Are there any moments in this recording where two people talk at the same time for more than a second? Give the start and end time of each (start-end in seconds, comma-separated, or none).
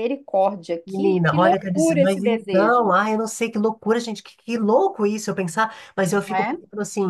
0.8-3.0